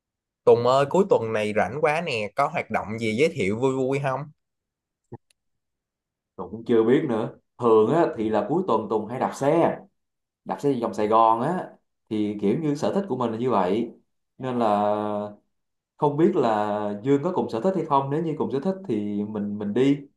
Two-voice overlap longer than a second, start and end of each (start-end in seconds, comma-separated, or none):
none